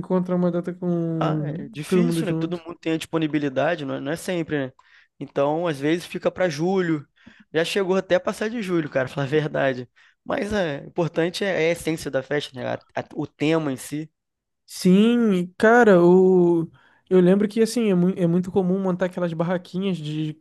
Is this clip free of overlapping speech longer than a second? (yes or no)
no